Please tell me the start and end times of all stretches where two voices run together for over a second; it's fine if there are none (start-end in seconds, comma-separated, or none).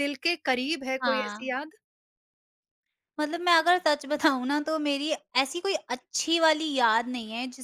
none